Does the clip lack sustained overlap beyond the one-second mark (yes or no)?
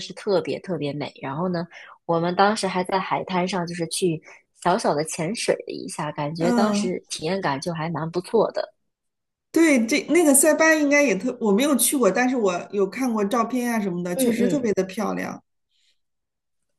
yes